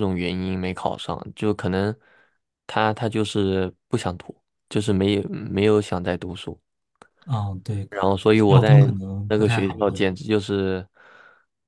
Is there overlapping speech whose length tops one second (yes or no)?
yes